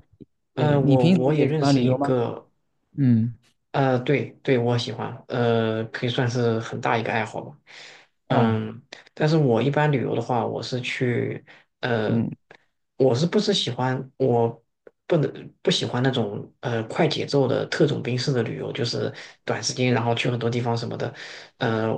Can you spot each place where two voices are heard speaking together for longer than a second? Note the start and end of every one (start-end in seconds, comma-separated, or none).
0.5-2.1